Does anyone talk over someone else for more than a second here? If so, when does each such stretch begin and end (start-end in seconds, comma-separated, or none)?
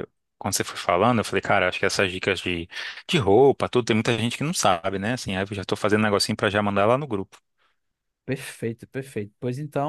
none